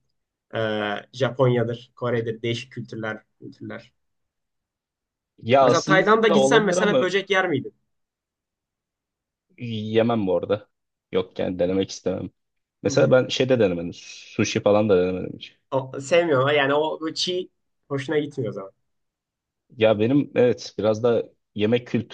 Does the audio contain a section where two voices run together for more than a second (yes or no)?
yes